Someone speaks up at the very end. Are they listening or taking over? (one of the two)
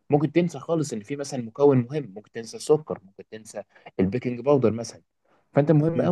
listening